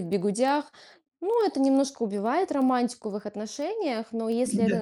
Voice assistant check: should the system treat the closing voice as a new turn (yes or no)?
no